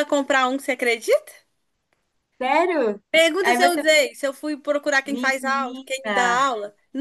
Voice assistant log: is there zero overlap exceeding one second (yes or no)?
no